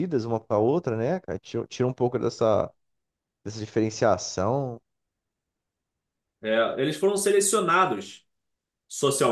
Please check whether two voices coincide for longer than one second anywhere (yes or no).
no